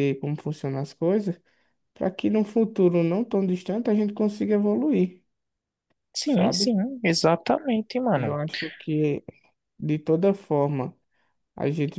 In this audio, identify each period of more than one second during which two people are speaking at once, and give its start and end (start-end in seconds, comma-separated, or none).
none